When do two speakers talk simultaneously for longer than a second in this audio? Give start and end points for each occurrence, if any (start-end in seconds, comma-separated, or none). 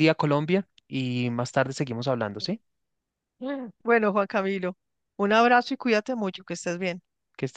none